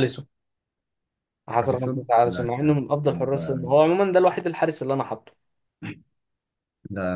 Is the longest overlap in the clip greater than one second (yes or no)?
yes